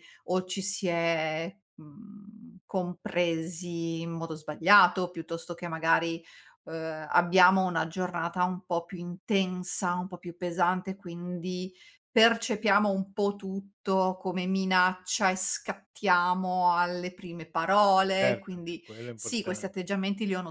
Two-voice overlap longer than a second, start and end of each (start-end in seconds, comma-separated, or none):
18.2-19.7